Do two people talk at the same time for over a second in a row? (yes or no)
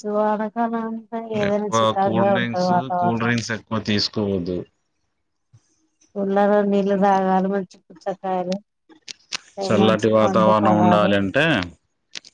yes